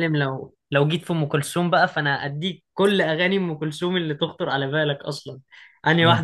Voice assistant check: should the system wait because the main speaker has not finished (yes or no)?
yes